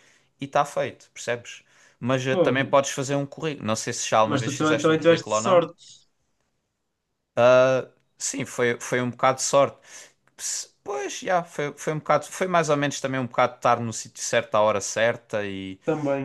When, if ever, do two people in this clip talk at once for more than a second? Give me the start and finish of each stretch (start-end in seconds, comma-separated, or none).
4.2-5.6